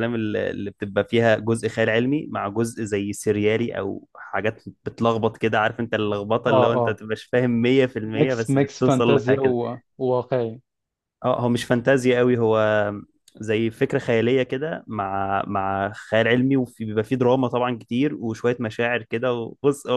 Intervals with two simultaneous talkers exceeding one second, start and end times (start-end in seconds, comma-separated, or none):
8.2-9.5